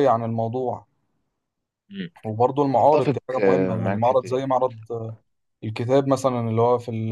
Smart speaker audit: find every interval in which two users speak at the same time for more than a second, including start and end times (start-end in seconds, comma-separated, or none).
2.8-4.4